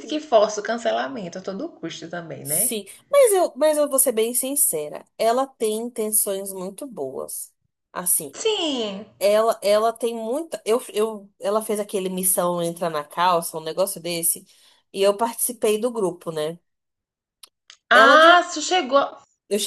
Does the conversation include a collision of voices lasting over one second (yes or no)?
no